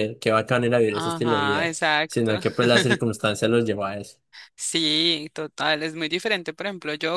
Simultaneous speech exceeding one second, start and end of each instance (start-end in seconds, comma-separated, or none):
0.9-2.3